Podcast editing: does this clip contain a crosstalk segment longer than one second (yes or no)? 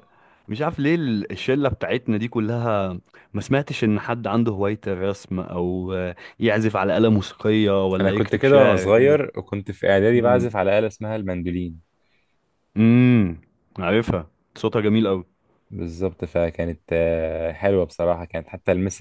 yes